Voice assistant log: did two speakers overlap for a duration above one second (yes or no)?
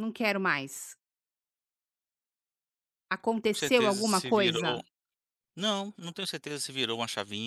yes